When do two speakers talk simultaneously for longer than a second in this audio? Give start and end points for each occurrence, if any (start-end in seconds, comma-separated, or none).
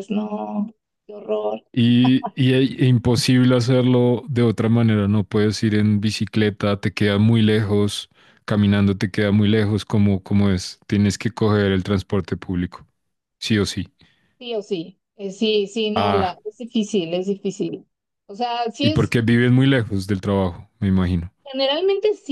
none